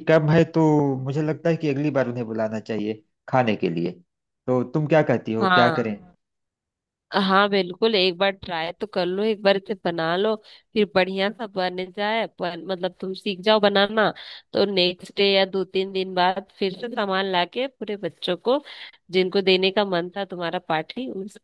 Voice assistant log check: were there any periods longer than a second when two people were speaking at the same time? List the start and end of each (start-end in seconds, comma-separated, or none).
none